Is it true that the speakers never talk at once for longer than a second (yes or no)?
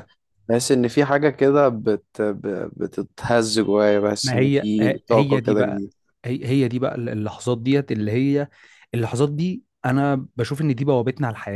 no